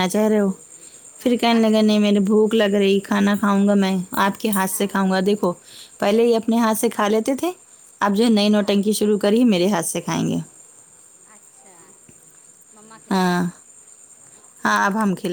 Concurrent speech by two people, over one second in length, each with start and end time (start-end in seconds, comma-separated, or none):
none